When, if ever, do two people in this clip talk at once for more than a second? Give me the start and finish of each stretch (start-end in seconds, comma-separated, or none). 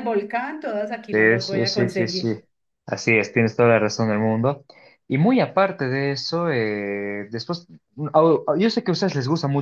1.1-2.3